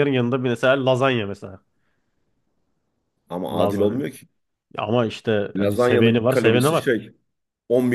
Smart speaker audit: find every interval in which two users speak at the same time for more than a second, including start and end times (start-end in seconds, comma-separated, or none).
5.5-6.9